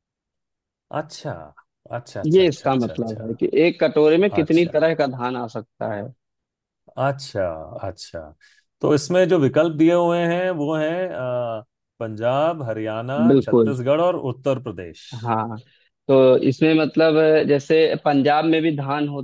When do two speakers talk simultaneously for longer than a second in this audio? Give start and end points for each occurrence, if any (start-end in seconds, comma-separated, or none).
2.2-3.7